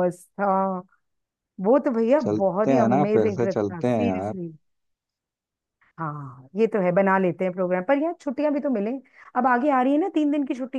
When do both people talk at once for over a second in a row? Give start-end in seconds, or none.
2.2-4.3